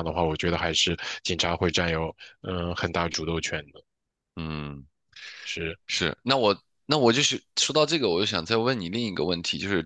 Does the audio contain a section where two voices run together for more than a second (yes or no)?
no